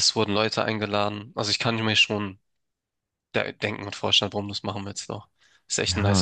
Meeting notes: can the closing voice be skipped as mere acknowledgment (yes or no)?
no